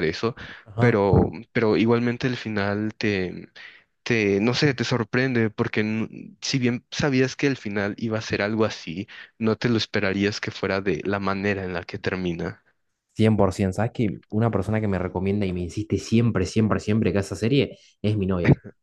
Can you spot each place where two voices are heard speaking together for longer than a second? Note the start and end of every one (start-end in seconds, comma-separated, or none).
none